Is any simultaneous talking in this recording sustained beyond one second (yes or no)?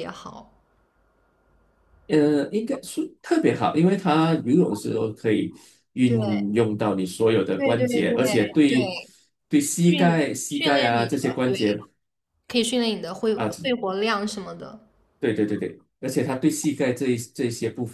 yes